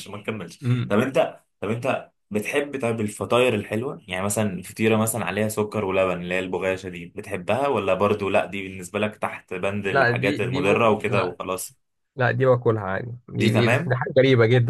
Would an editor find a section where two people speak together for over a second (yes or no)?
yes